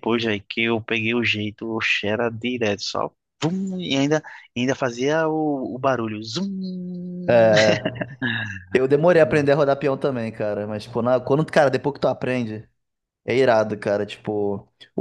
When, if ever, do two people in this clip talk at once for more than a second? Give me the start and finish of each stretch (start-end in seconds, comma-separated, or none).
none